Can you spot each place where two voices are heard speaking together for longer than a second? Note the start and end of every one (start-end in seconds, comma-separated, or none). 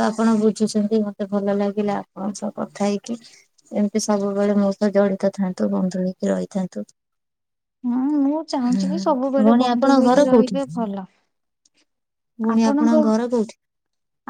8.7-10.6